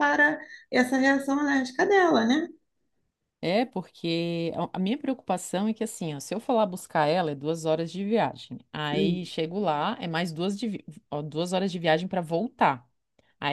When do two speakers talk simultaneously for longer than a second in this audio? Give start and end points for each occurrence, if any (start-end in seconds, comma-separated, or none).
none